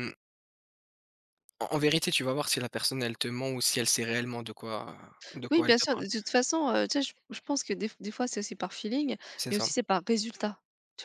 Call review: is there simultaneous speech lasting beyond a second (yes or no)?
no